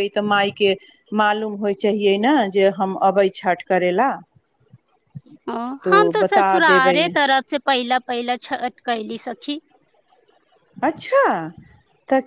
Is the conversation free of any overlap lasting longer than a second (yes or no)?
yes